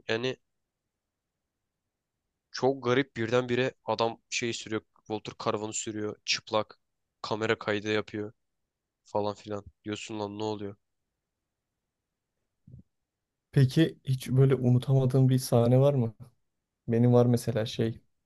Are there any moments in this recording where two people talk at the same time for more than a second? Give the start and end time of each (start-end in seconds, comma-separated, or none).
none